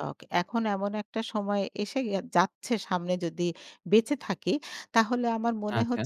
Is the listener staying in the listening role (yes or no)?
yes